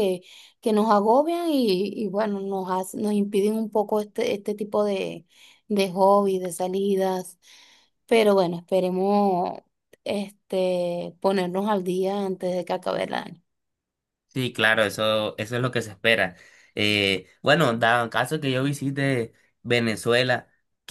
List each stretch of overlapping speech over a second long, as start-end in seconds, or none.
none